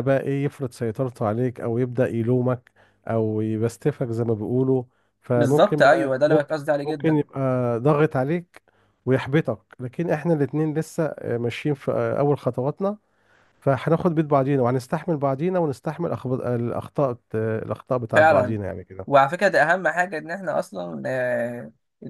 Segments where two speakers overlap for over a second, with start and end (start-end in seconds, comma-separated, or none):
5.3-7.2